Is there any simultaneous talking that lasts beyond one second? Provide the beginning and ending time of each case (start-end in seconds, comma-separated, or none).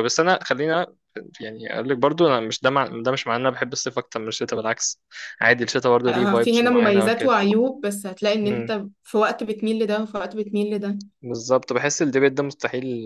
6.1-7.3